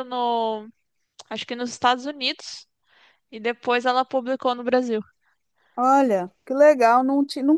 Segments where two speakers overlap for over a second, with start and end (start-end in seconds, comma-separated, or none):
none